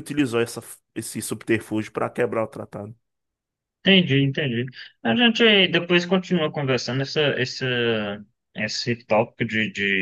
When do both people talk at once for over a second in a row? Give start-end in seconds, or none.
none